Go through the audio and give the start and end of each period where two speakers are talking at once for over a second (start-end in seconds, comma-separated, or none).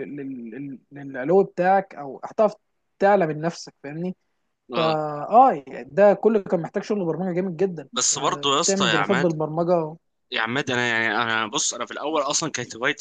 7.9-9.3